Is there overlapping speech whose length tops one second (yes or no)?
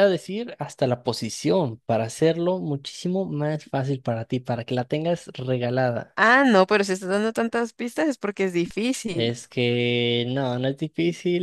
no